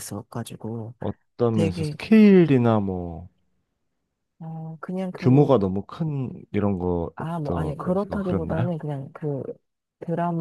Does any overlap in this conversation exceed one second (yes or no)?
yes